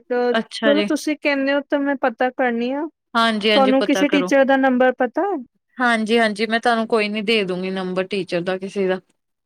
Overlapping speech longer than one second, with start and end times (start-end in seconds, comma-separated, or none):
none